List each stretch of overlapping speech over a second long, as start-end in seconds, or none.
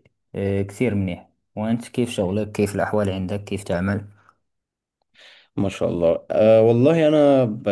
none